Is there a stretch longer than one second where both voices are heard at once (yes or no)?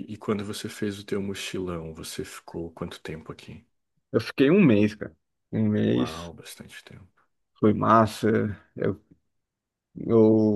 no